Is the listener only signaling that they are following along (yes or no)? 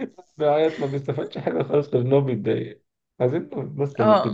yes